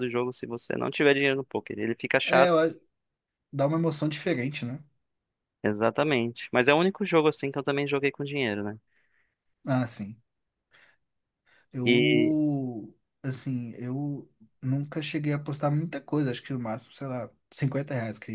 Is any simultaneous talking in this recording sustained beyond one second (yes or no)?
no